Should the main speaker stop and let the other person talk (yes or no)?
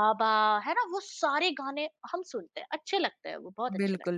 yes